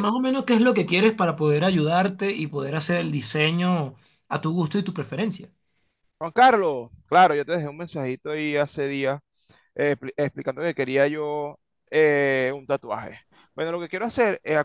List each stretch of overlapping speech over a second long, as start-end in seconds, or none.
none